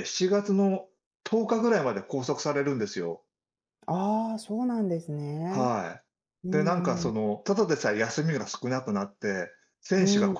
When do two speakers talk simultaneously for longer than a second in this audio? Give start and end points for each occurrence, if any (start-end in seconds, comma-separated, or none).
none